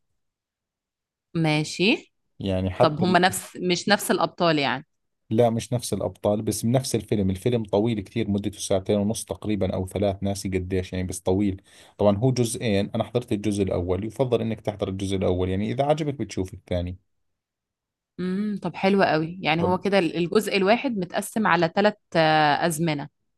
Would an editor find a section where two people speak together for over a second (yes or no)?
no